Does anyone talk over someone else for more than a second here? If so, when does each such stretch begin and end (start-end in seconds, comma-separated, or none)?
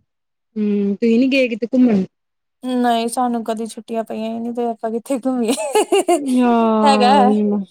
none